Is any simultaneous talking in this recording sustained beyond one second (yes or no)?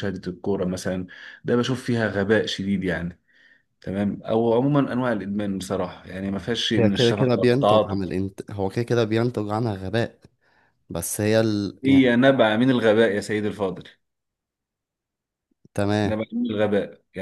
yes